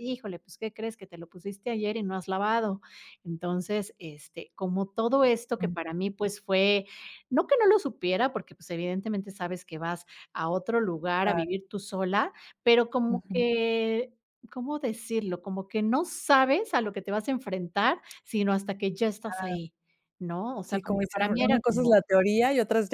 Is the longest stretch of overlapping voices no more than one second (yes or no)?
no